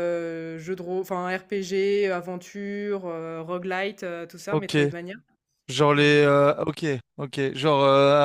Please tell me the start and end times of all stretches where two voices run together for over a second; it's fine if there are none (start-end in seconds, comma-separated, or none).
none